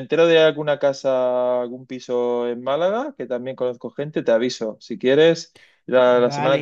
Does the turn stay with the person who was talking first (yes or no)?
yes